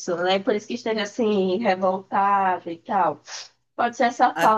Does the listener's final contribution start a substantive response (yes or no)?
no